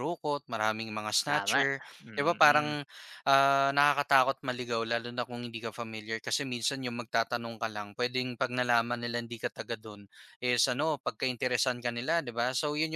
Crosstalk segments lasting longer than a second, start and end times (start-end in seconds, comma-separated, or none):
1.3-2.8